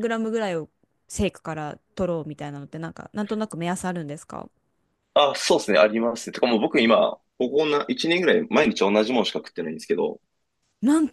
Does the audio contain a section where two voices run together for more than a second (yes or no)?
no